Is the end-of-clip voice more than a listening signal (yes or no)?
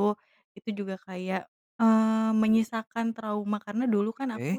no